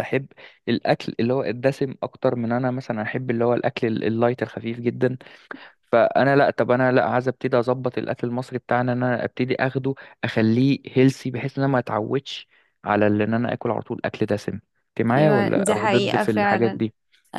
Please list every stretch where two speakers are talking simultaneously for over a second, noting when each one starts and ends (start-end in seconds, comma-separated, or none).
15.2-16.8